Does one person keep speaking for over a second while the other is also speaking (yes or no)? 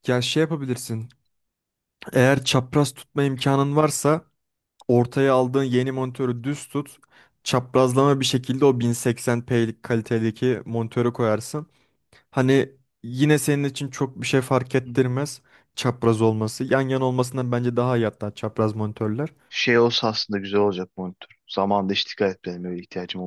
no